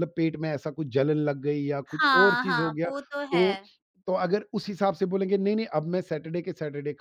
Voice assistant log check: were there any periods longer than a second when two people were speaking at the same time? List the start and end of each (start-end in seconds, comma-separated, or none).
1.9-3.6